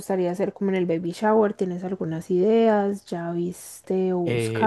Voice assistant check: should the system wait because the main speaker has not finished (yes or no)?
no